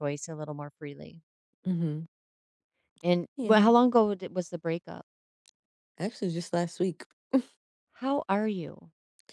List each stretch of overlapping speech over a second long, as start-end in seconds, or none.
none